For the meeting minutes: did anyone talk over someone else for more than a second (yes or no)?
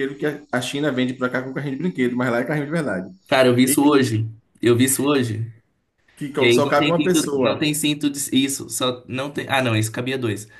yes